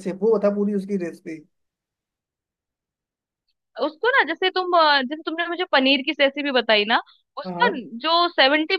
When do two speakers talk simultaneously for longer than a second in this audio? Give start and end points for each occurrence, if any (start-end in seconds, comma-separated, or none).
none